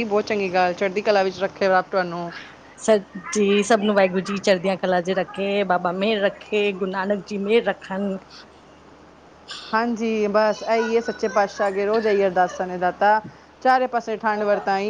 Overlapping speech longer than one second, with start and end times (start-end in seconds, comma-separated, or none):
none